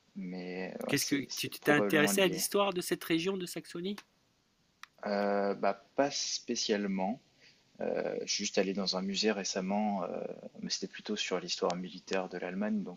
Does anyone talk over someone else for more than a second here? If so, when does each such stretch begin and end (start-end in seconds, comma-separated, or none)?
0.9-2.5